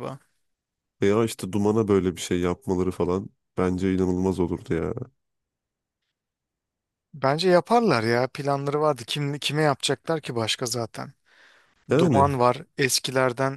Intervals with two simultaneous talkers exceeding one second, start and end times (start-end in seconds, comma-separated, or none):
none